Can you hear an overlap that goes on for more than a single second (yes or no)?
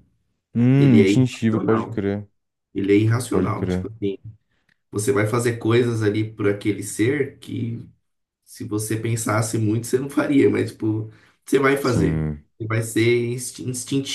yes